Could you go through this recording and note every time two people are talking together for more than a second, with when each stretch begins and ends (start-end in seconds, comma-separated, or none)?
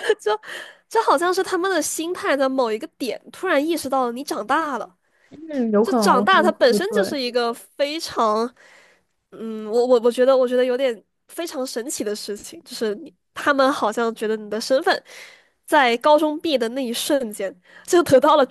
5.8-7.2